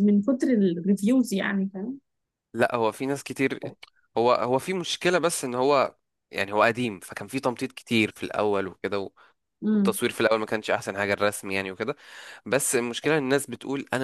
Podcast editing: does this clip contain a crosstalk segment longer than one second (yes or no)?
no